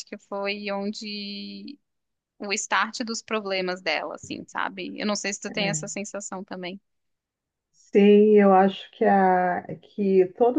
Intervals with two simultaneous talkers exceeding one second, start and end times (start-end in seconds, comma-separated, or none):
none